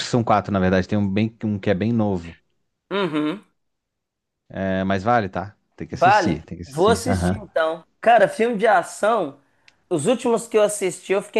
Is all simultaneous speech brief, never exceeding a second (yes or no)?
no